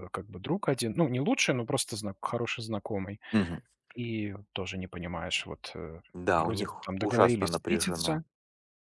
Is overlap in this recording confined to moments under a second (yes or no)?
no